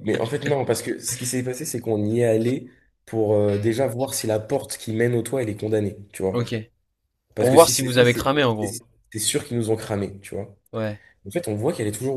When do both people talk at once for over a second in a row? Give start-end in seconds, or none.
7.4-8.8